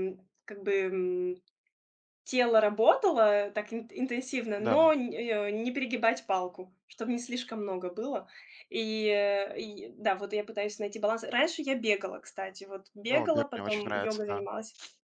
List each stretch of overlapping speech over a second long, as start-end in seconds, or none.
13.1-14.5